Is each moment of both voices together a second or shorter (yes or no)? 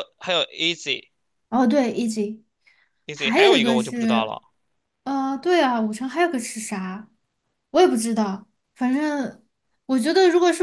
no